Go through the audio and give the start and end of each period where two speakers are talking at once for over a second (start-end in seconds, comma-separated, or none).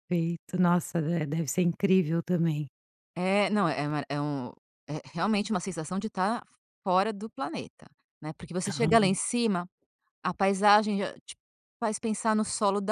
none